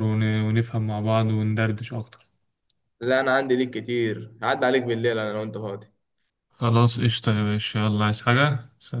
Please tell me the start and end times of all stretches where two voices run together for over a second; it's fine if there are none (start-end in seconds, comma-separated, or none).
none